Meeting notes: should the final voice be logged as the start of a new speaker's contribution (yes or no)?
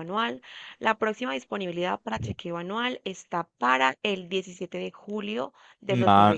yes